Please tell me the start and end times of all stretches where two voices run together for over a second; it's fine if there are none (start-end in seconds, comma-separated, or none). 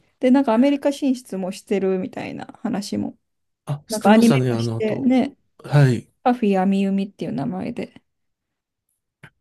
3.9-5.2